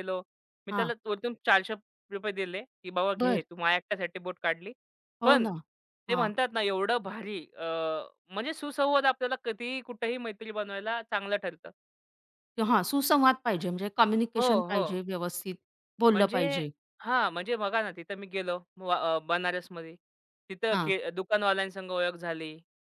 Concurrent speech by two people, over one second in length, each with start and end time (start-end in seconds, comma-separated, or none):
none